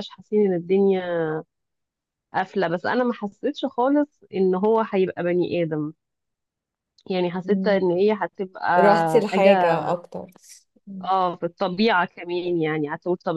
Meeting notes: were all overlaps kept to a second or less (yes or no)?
yes